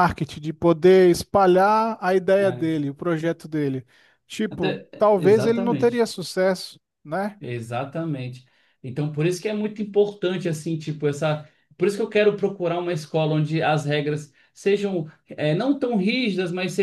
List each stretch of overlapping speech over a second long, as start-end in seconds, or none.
4.5-6.1